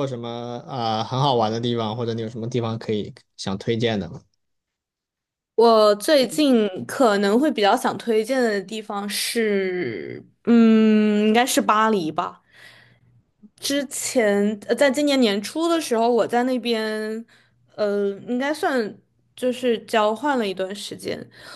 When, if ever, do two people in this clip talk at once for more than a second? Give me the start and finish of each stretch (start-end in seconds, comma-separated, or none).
none